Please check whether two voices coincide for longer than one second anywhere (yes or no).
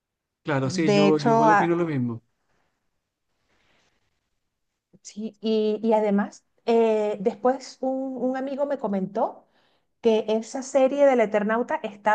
yes